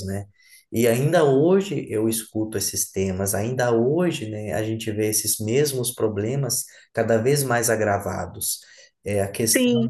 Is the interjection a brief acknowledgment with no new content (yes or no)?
yes